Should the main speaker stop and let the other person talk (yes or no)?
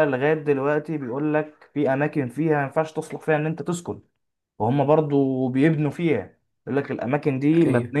no